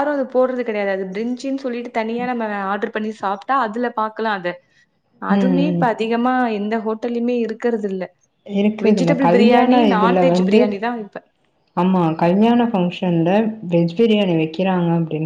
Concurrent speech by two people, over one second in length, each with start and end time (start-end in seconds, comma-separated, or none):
8.9-10.6